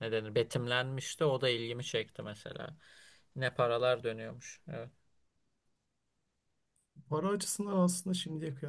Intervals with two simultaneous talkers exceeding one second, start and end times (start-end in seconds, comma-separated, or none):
none